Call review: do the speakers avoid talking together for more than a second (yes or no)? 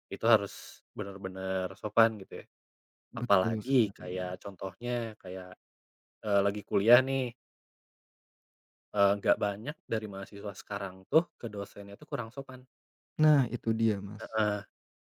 no